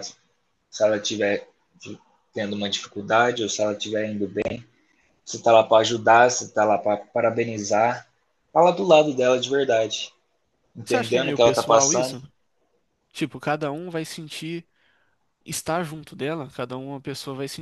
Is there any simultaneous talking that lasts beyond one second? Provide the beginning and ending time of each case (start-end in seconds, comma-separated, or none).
10.8-12.2